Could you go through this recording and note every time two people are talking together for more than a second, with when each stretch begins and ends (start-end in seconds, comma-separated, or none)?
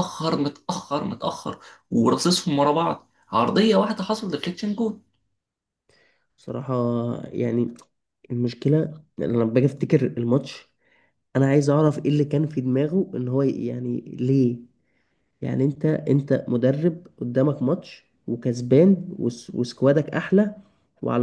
none